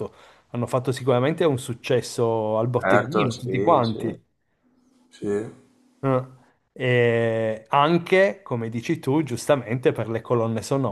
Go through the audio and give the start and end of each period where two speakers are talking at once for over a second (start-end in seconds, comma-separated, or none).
2.8-4.0